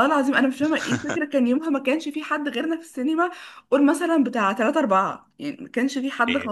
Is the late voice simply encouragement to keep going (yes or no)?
yes